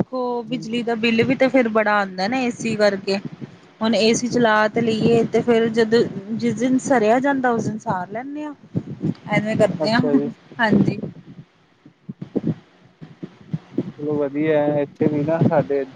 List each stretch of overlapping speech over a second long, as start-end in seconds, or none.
none